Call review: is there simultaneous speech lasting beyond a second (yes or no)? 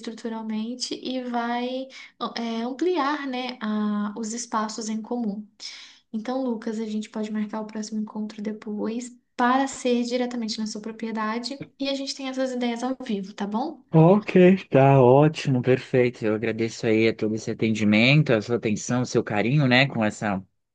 no